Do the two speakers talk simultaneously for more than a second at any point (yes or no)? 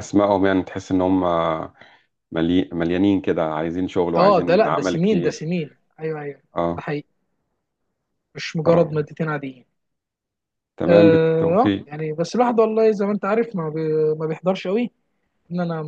yes